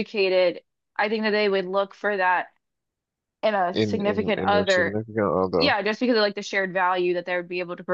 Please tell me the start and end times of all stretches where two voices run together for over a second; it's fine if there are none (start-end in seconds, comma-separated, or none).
3.7-5.0